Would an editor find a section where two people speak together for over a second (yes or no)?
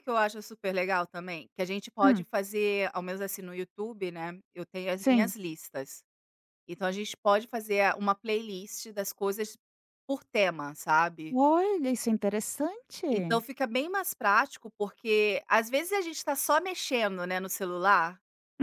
no